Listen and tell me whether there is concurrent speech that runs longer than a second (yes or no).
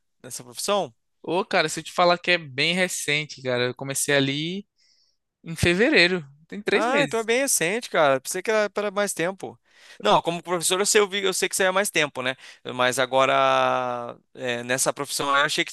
no